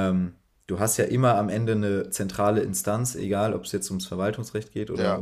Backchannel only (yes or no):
yes